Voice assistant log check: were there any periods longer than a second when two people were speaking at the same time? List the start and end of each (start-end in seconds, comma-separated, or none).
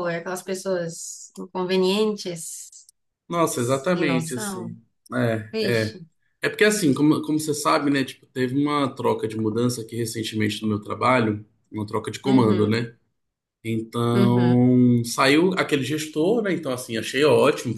3.5-4.8